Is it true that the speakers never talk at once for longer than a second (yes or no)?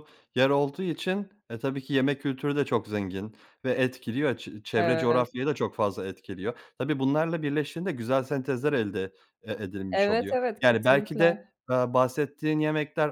no